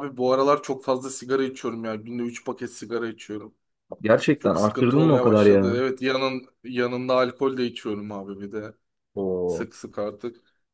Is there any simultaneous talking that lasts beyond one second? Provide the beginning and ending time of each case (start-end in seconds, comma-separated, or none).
4.4-5.8